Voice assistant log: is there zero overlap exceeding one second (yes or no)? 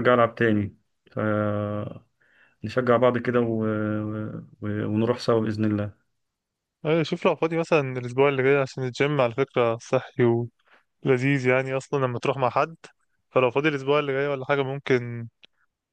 yes